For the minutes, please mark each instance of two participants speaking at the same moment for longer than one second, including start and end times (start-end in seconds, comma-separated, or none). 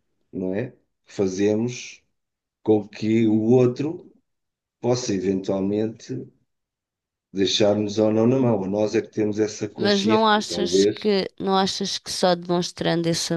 9.8-11.2